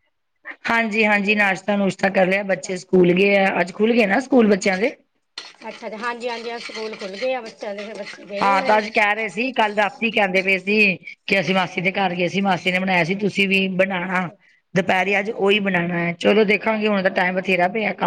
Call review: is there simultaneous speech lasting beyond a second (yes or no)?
no